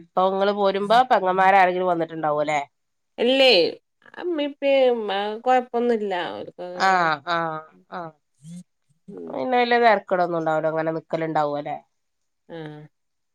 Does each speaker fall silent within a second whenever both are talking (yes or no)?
yes